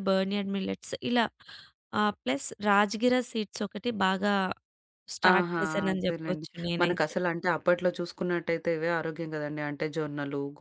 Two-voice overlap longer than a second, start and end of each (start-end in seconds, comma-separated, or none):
5.3-7.1